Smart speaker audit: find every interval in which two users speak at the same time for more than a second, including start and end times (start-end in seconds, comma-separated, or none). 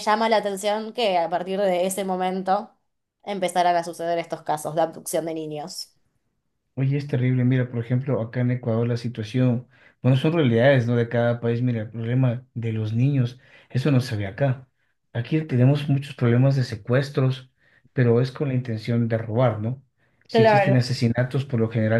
none